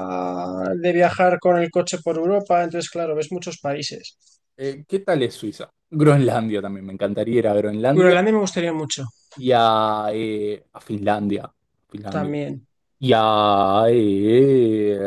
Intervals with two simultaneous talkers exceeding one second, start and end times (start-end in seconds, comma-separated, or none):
none